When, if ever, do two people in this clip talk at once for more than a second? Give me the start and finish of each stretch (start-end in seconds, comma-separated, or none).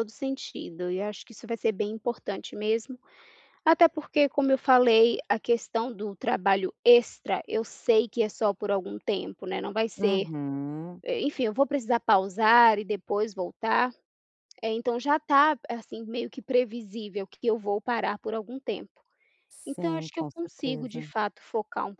19.6-21.1